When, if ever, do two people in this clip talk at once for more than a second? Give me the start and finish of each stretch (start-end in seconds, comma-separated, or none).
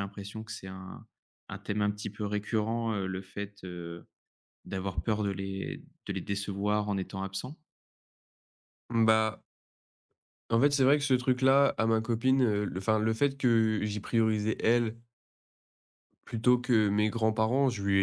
none